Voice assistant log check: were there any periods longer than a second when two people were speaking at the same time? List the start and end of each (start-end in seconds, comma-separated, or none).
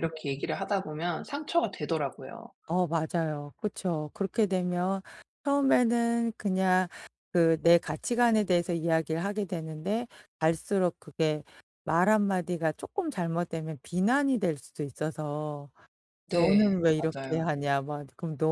16.3-17.5